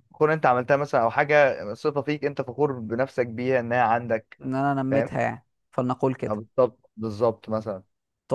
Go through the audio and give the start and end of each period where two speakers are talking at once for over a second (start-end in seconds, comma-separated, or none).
none